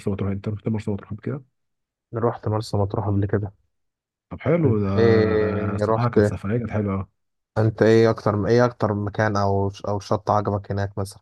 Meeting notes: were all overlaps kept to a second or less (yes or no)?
no